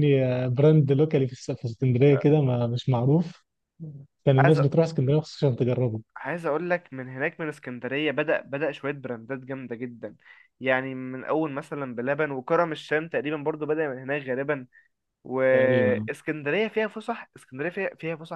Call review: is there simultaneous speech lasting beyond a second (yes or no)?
no